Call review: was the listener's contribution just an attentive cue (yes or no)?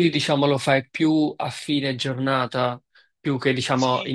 no